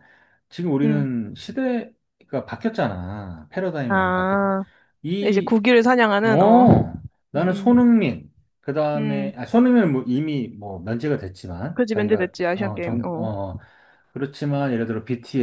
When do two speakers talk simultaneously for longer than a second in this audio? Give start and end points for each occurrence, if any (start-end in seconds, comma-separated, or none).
11.7-13.3